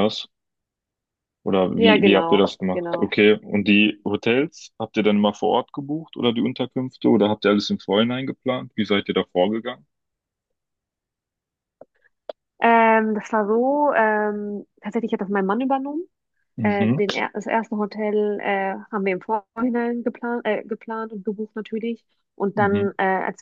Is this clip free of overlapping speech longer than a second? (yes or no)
no